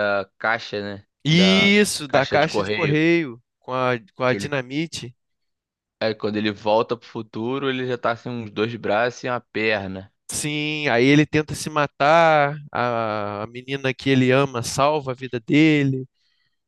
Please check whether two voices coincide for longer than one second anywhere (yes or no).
yes